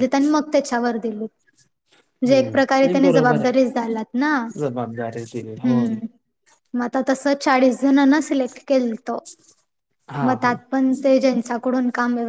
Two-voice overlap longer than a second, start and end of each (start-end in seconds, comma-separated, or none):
2.3-3.7